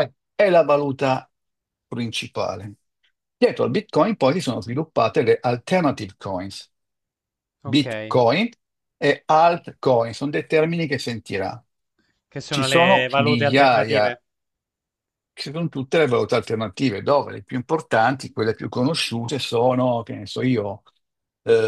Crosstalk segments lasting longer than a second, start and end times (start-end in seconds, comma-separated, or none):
12.5-14.2